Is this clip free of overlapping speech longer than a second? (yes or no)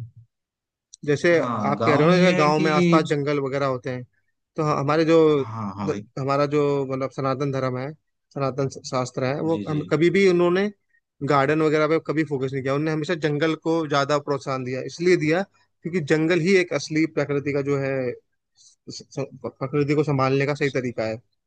no